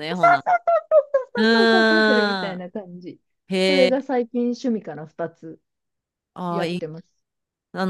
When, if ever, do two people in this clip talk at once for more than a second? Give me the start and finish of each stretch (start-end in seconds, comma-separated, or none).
1.4-2.6